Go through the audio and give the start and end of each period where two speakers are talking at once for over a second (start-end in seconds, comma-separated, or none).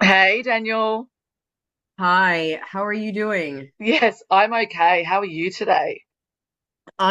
none